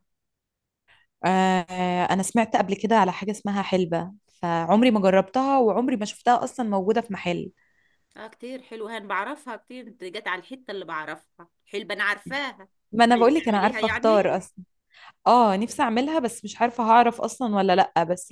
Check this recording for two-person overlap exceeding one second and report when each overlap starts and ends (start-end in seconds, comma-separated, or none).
13.1-14.4